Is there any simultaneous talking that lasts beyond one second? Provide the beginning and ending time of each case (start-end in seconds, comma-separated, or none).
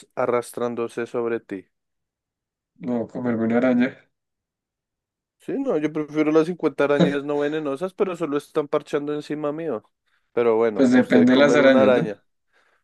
10.7-12.1